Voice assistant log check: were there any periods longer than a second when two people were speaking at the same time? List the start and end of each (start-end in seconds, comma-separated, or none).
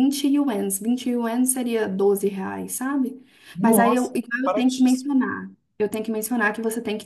3.6-5.1